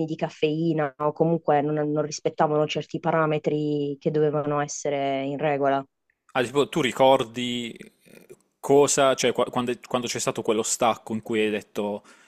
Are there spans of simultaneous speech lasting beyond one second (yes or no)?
no